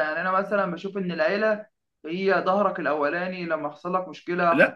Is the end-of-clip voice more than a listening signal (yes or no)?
yes